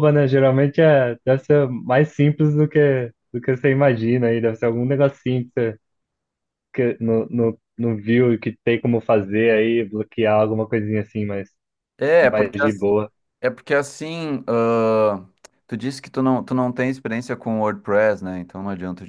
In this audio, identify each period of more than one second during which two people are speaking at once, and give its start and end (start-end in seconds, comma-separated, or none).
none